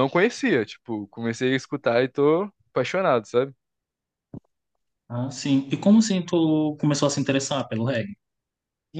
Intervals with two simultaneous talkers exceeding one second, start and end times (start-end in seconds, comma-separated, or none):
none